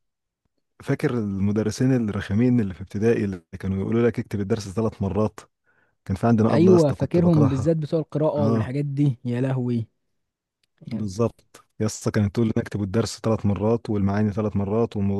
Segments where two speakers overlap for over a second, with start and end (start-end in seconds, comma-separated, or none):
6.5-7.8